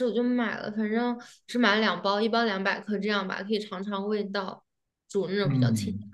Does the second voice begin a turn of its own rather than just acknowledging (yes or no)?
yes